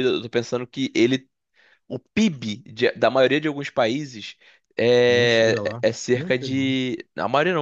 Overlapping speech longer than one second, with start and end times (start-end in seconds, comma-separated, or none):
5.0-6.7